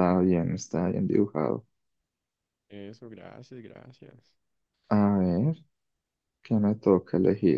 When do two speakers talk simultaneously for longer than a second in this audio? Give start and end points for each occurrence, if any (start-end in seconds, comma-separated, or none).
none